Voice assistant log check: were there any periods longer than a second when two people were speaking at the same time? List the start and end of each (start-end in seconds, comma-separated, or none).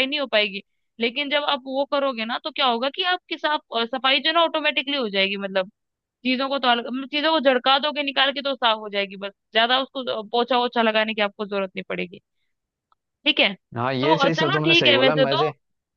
14.0-15.3